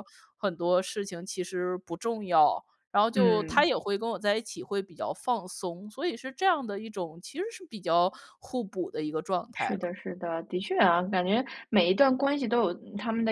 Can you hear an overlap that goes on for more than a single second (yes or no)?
no